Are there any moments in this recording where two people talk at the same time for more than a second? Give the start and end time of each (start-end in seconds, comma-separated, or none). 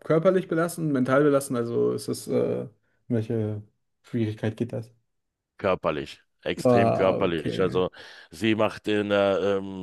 6.6-7.8